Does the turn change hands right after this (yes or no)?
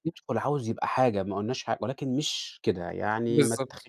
yes